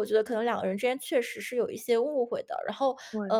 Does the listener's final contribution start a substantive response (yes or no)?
no